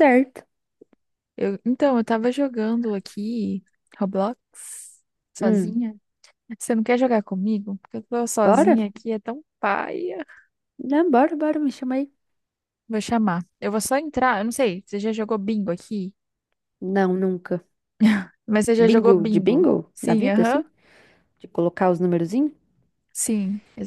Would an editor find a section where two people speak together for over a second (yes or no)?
yes